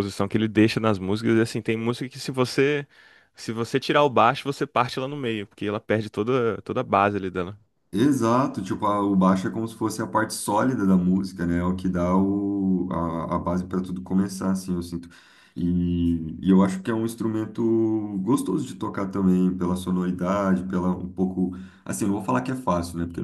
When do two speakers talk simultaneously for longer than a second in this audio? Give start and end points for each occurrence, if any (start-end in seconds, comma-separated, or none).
none